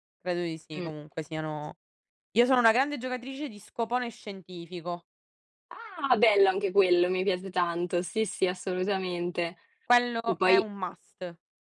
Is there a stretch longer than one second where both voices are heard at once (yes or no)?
no